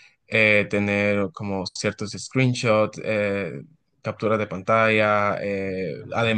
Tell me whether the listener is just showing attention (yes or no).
yes